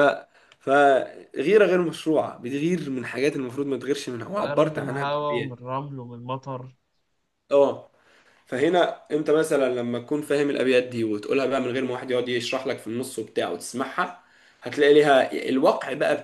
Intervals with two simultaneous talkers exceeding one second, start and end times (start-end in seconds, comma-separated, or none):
4.4-5.6